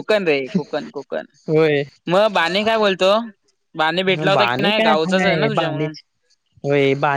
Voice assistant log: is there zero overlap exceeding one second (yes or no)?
no